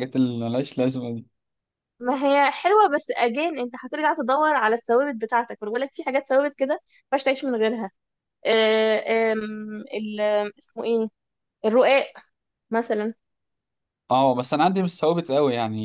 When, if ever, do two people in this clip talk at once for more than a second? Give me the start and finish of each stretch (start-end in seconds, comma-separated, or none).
none